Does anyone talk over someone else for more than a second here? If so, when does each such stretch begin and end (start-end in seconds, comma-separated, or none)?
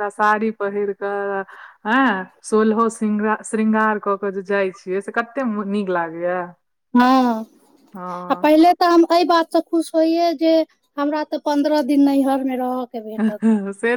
none